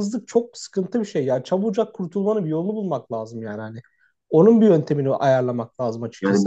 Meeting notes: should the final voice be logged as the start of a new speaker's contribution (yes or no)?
no